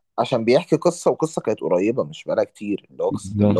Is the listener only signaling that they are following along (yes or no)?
yes